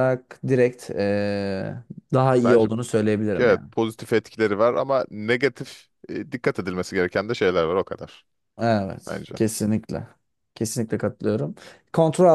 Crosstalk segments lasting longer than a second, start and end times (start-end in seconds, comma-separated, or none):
none